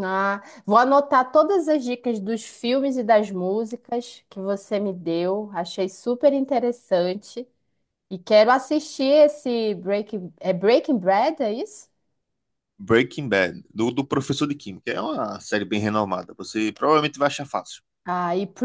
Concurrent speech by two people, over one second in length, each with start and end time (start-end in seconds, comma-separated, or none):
none